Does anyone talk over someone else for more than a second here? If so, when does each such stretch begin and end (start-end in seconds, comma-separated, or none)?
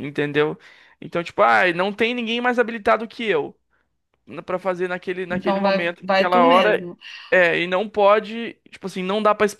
5.3-6.9